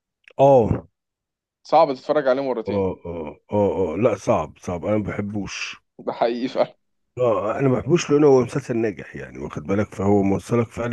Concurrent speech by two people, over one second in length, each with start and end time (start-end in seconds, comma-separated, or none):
none